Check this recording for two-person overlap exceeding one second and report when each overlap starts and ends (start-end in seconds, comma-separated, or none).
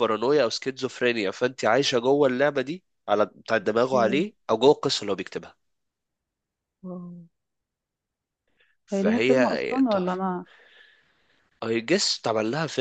8.9-10.2